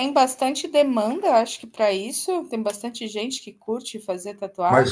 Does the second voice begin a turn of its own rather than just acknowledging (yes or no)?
yes